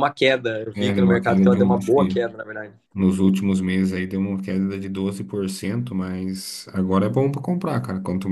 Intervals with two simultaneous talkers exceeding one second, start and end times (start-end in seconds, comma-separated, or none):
0.7-2.1